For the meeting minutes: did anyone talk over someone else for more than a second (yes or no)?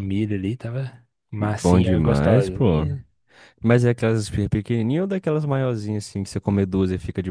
yes